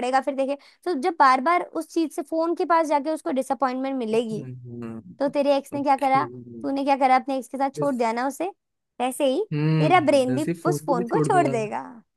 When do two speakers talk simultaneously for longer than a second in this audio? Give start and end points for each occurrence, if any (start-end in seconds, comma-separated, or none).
9.8-11.5